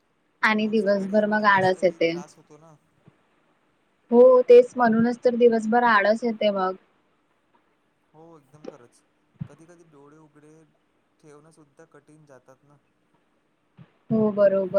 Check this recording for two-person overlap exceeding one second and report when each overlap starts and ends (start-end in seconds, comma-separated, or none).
0.6-2.1